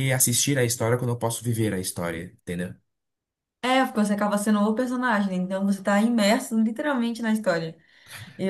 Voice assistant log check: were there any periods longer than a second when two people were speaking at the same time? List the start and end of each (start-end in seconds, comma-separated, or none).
none